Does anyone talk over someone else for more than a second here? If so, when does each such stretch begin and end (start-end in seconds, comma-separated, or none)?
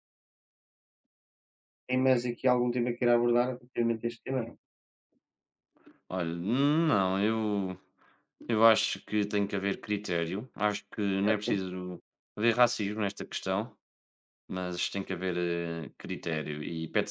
none